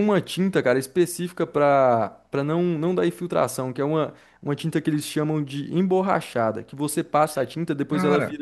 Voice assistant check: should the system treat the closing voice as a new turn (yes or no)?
no